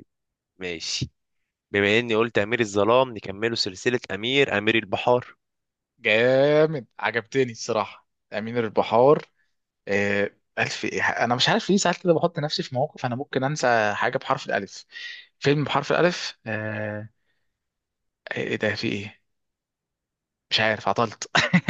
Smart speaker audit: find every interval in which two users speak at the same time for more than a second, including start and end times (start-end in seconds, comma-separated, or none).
none